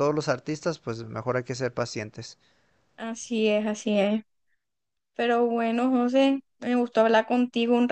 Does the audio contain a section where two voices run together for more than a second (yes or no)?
no